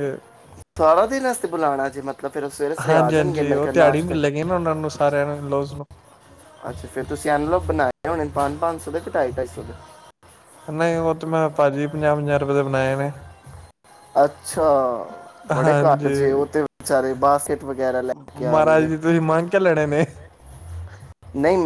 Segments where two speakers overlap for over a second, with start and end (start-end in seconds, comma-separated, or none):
2.9-4.4